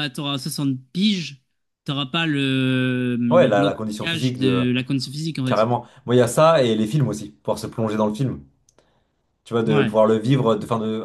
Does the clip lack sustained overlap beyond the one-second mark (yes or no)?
no